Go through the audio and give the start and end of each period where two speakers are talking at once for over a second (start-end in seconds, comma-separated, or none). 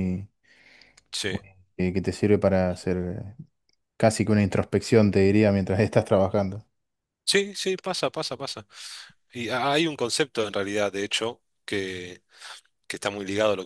none